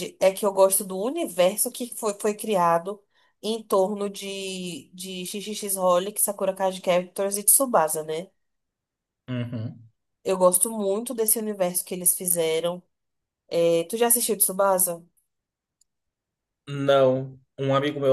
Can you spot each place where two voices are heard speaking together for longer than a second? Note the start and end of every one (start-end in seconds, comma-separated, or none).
none